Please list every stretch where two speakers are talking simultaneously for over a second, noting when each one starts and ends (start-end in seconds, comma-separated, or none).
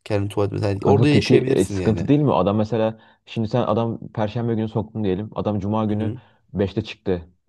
0.8-2.1